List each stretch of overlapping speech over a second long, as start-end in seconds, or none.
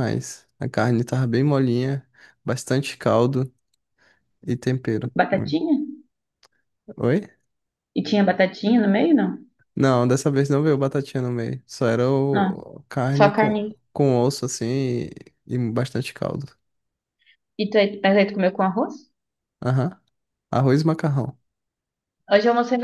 none